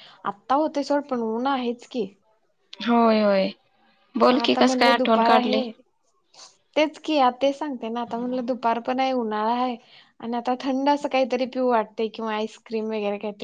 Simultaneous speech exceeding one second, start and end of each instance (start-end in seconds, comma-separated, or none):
4.3-5.6